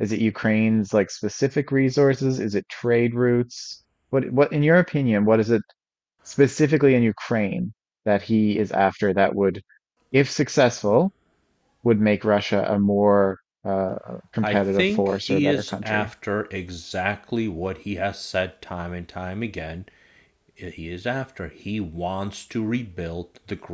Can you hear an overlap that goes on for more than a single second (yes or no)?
yes